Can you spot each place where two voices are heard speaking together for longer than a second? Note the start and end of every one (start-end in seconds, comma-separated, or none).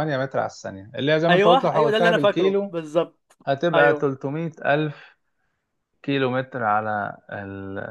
1.3-2.8